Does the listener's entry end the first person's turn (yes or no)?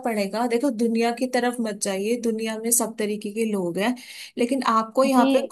no